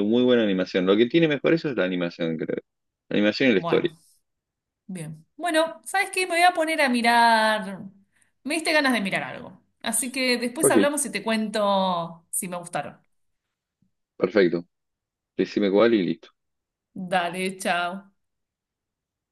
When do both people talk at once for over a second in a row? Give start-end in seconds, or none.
none